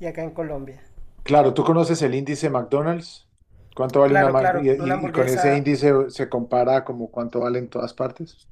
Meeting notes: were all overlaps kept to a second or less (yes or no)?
no